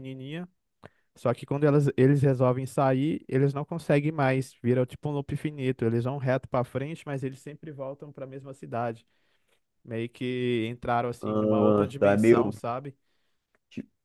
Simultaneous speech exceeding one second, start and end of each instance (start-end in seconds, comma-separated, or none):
11.2-12.5